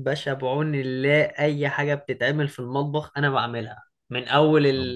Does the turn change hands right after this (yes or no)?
no